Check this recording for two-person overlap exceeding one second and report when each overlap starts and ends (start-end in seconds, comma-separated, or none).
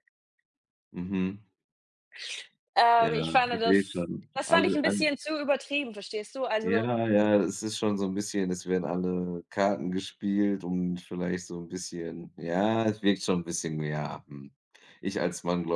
3.0-5.1